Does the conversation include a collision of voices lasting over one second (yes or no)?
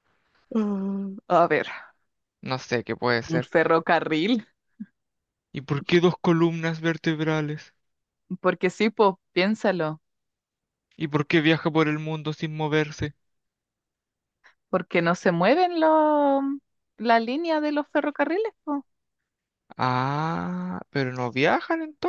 no